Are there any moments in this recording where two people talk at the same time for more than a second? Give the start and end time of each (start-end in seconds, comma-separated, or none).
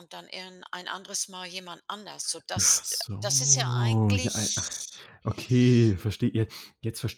2.6-4.7